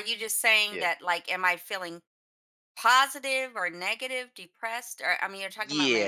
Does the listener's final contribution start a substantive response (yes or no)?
yes